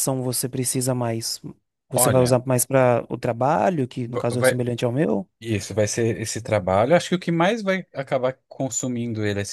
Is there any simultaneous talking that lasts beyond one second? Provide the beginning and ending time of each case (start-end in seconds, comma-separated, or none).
none